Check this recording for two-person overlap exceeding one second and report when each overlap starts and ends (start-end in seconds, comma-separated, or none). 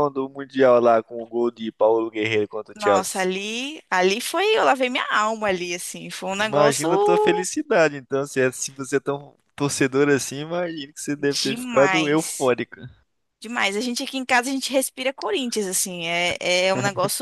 11.2-12.5